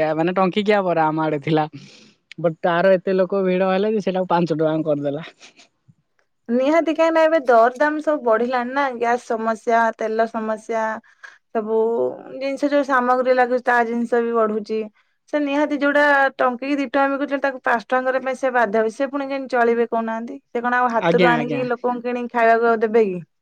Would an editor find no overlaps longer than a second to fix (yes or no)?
yes